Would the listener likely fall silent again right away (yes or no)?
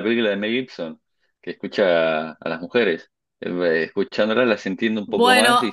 no